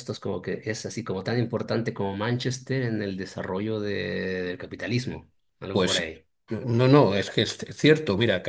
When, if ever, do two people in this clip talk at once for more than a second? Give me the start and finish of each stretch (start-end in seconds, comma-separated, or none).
none